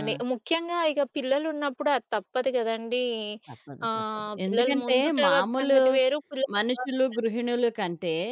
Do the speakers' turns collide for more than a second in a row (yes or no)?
yes